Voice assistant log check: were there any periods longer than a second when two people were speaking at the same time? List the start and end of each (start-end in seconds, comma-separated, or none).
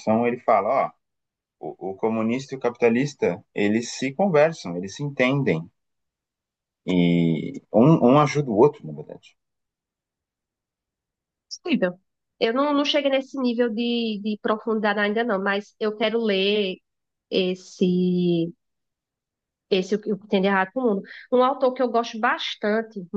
none